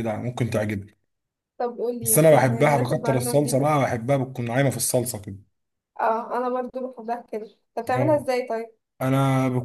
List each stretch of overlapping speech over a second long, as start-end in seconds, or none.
2.0-3.7